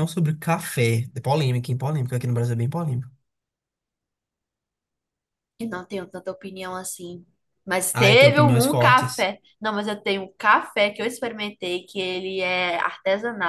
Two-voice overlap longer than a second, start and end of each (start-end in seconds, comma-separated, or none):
7.9-9.3